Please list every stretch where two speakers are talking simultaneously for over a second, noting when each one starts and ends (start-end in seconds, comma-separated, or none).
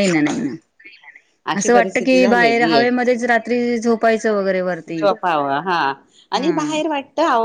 1.6-2.8